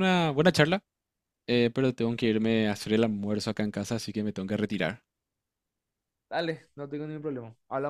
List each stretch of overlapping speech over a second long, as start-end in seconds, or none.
none